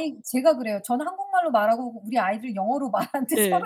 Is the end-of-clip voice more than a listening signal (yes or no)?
yes